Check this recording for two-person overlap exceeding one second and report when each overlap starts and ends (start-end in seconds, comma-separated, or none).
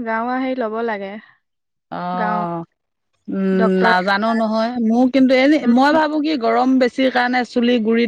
none